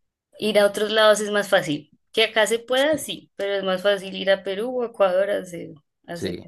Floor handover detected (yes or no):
yes